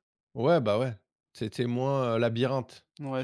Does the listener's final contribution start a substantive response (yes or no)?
yes